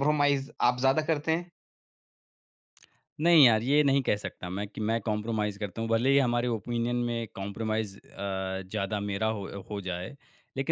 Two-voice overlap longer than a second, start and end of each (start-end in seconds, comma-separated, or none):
none